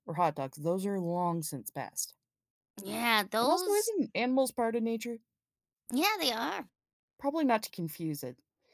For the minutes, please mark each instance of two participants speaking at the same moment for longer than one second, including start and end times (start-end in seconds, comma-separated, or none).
none